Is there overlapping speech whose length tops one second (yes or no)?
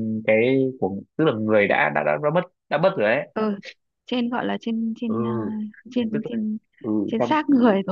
no